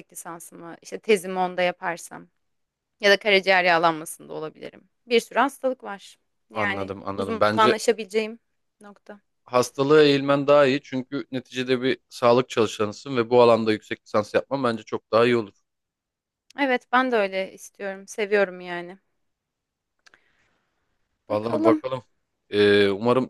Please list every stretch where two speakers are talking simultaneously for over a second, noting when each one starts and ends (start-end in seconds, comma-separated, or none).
6.5-7.8